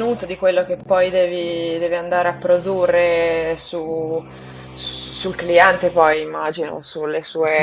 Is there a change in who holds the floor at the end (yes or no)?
yes